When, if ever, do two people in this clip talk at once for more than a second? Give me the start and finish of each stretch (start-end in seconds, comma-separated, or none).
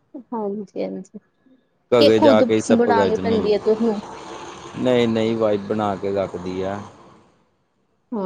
2.0-4.0